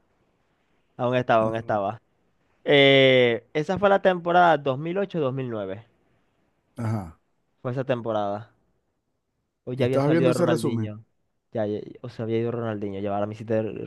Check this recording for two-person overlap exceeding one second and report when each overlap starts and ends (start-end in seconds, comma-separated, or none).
9.8-10.9